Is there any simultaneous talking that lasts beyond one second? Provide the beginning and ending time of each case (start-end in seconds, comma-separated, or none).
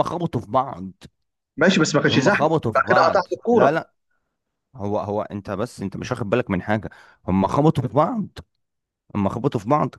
2.1-3.8